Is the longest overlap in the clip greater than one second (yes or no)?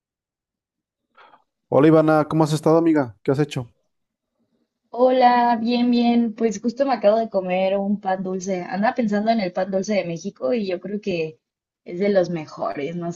no